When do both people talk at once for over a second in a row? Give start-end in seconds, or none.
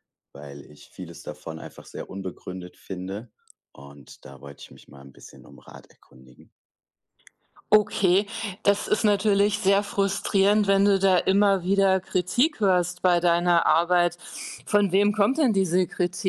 none